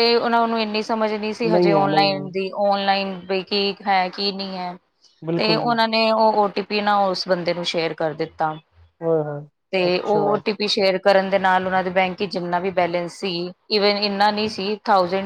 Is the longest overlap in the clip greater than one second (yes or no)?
no